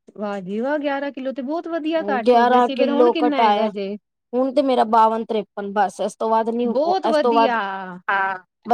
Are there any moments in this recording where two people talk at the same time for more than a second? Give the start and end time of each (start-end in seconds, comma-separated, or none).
2.3-3.7